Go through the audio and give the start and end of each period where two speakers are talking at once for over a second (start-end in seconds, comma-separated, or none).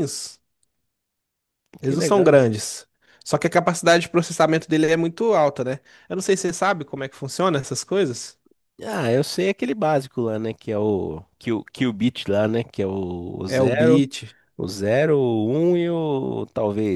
none